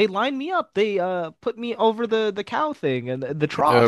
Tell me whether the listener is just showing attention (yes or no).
no